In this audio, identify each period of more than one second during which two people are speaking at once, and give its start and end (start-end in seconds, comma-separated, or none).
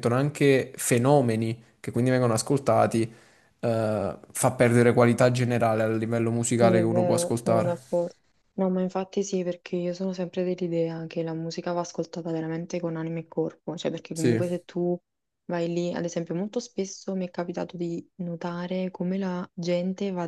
6.6-7.9